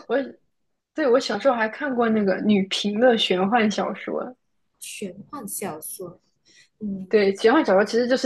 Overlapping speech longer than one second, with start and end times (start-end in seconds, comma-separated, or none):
none